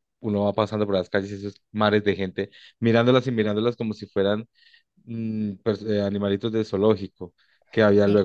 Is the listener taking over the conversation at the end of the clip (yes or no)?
no